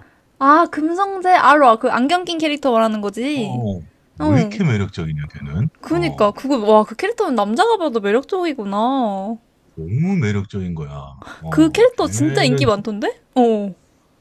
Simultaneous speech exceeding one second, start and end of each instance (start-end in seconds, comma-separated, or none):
11.5-12.8